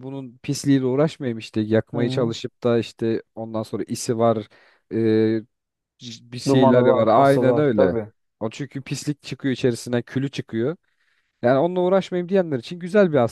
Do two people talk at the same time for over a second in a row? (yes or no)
yes